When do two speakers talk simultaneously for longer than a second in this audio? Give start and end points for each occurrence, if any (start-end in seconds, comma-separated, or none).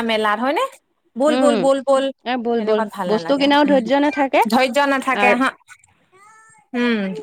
2.6-4.4